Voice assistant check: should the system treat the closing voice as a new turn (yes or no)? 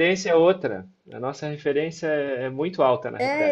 yes